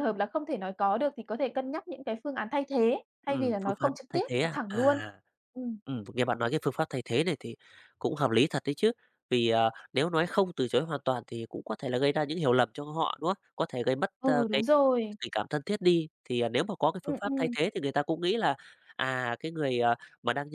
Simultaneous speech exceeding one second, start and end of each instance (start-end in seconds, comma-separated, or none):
3.2-5.0